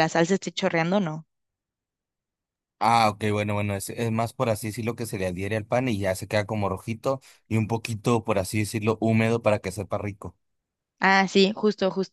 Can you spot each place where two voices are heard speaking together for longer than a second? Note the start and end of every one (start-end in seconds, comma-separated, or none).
none